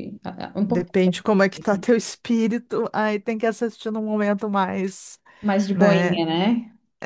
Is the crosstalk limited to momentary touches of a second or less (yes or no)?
no